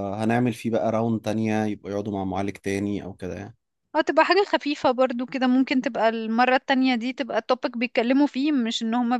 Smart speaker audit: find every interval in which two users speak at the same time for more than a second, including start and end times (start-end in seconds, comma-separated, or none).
none